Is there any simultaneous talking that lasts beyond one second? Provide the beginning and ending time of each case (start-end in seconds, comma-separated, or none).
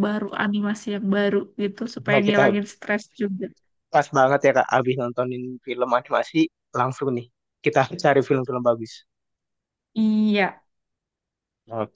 none